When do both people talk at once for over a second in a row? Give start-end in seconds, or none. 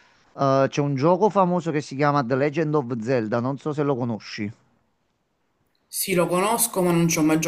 none